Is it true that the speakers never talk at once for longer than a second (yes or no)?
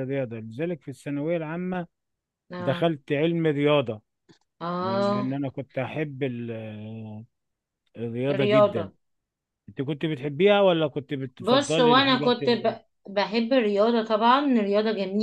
no